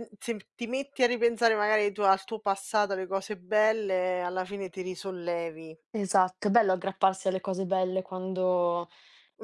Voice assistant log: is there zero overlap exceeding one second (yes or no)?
yes